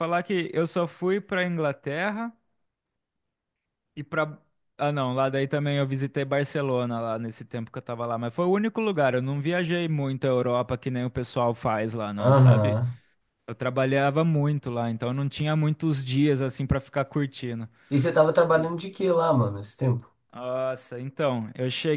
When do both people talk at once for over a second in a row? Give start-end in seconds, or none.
none